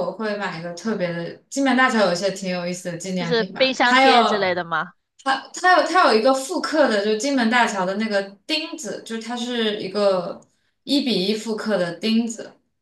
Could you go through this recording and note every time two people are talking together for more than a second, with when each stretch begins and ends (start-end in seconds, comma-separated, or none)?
3.1-4.5